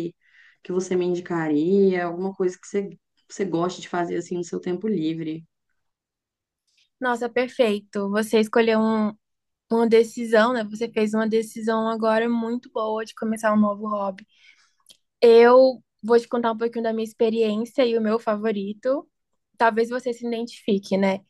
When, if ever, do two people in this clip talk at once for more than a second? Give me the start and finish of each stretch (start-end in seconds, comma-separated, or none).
none